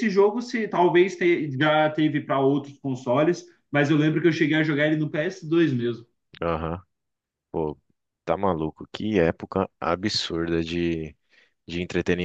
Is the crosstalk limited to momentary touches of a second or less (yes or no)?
yes